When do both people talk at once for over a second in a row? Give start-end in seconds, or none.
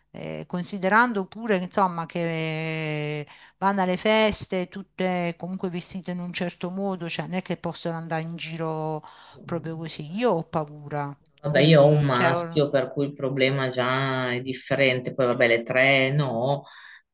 11.4-12.7